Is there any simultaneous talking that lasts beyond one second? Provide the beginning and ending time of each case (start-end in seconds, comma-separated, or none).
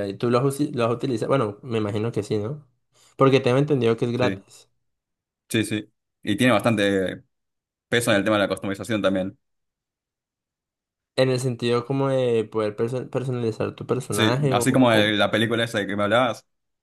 none